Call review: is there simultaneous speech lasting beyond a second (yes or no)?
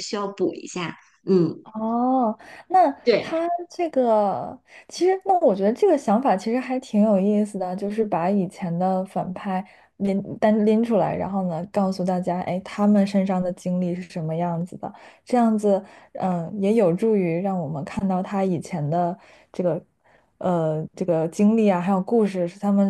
no